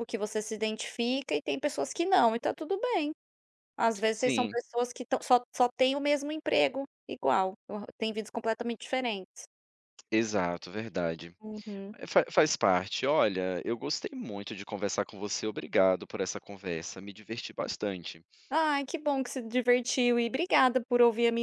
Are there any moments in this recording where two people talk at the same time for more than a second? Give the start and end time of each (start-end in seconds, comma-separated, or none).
none